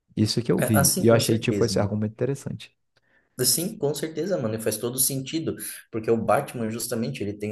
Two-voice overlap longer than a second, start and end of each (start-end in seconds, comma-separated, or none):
0.6-1.9